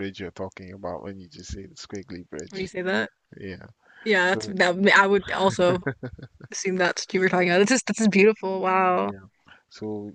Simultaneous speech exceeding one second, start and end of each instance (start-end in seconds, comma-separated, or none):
none